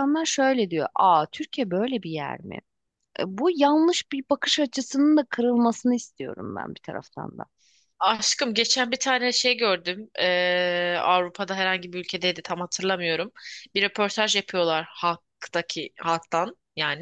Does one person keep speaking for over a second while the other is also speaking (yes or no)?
no